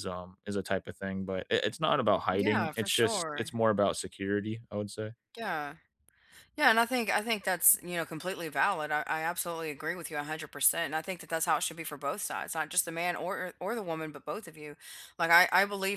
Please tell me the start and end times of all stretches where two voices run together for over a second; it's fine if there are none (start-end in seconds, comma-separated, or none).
2.3-3.5